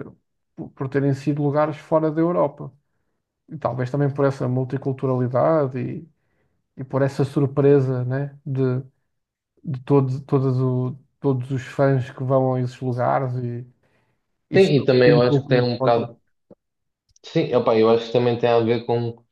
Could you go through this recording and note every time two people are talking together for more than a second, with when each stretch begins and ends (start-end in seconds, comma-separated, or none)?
14.6-16.0